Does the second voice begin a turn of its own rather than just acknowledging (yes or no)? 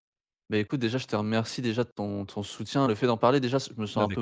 no